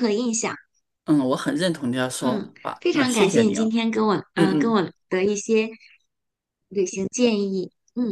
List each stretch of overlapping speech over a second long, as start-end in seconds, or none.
2.2-3.8